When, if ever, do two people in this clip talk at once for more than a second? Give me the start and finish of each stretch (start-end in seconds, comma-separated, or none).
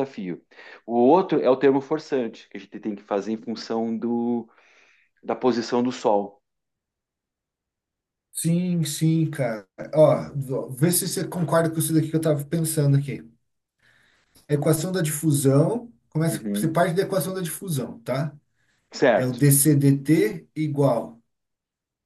none